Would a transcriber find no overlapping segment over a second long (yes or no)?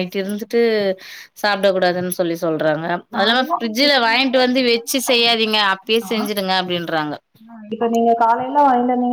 no